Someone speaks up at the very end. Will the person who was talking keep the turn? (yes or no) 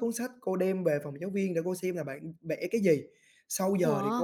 yes